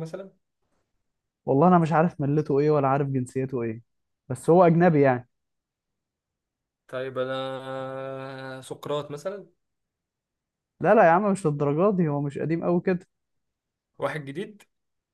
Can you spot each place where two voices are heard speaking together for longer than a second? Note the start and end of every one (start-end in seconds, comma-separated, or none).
none